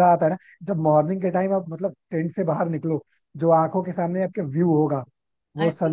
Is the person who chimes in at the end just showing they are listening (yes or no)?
yes